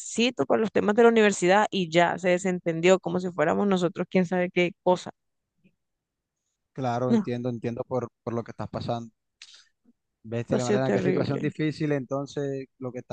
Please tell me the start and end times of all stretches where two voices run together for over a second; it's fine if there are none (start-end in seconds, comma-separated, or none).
10.3-11.5